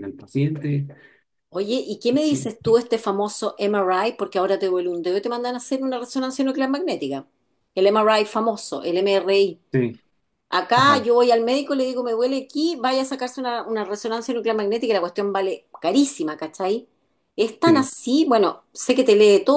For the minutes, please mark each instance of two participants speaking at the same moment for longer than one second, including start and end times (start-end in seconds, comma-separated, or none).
none